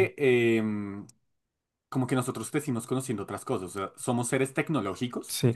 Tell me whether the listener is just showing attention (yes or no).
no